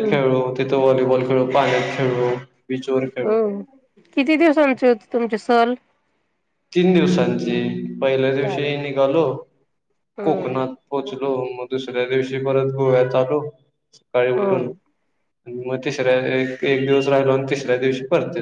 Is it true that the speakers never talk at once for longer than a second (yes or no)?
yes